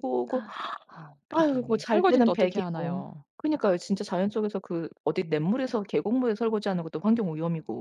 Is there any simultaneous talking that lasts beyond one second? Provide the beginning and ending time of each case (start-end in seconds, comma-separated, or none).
1.3-3.2